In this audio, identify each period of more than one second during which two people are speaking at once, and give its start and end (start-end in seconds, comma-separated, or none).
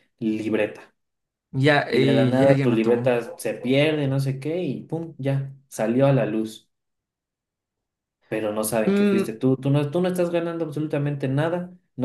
1.9-3.3